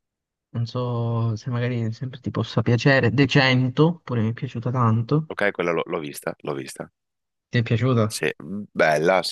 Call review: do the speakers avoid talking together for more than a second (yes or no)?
yes